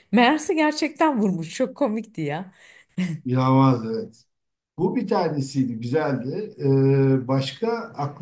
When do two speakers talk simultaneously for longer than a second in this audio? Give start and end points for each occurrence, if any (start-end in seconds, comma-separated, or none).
none